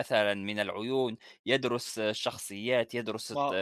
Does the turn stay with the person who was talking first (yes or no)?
no